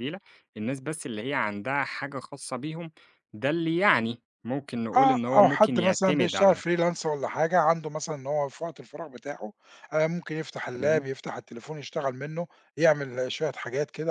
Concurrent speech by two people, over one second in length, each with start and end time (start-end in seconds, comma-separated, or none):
5.0-6.6